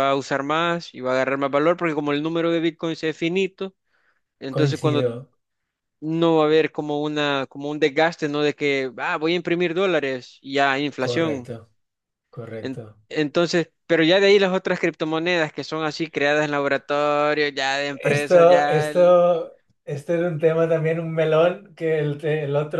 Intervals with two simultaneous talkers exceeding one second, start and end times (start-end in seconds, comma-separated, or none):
17.9-19.2